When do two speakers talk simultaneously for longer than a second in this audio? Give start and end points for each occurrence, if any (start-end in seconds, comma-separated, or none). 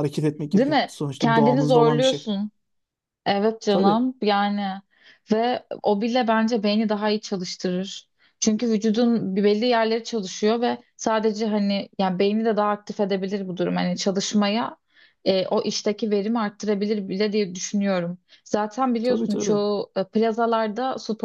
0.5-2.3